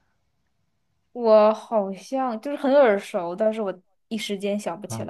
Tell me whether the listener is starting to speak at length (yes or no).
yes